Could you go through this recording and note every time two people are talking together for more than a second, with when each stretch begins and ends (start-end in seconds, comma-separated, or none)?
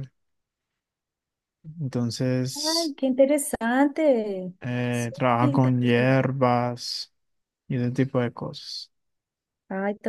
4.9-6.3